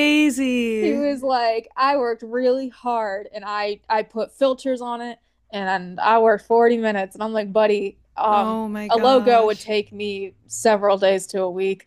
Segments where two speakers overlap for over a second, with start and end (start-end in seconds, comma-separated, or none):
8.3-9.7